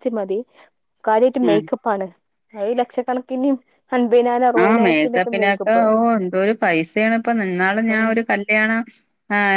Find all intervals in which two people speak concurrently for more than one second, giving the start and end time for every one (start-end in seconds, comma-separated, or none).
none